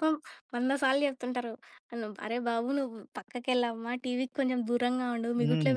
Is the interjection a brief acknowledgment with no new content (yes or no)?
no